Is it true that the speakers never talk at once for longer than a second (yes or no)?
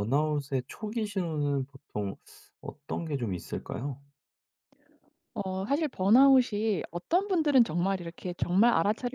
yes